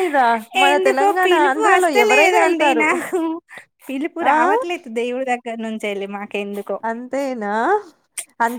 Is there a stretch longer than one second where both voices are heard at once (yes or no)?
yes